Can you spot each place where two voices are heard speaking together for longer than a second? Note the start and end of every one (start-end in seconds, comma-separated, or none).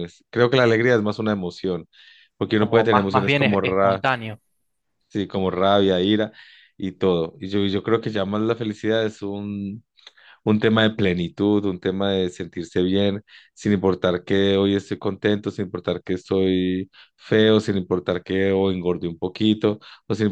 2.6-4.0